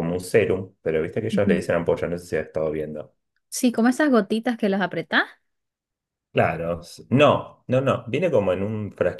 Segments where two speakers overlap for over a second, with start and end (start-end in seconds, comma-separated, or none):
none